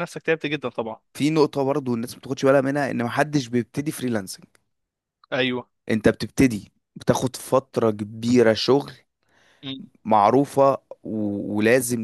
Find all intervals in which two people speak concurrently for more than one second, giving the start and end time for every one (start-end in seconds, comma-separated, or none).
none